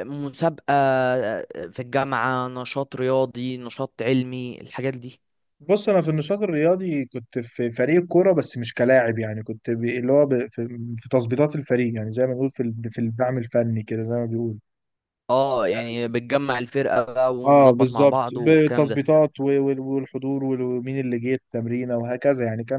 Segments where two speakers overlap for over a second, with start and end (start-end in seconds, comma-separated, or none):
17.4-19.0